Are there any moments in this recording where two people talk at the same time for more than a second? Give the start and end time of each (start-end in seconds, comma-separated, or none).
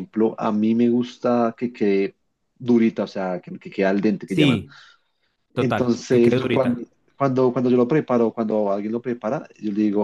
5.5-6.8